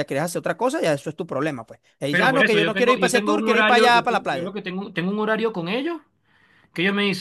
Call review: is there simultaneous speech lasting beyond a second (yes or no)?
yes